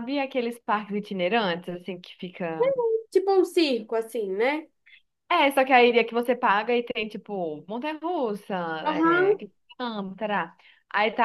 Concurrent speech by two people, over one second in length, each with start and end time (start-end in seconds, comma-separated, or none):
none